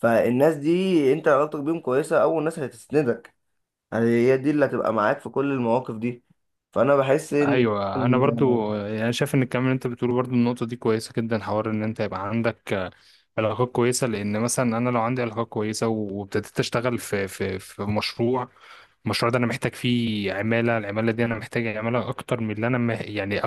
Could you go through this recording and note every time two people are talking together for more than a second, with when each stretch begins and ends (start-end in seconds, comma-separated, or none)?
none